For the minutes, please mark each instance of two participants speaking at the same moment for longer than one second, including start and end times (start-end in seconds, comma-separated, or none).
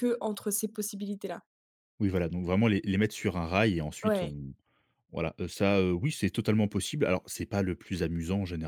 none